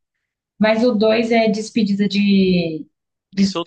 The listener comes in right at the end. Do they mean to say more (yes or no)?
yes